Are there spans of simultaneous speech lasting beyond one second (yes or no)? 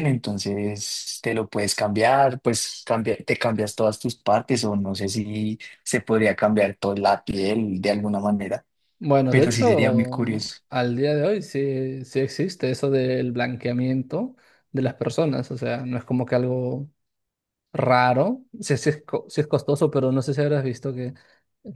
yes